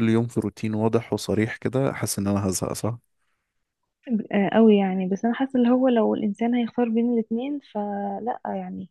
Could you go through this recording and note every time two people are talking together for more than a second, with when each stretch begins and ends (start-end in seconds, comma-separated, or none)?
none